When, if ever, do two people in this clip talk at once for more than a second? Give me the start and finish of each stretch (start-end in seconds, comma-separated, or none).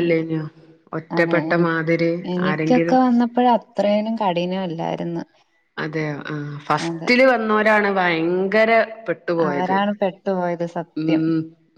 none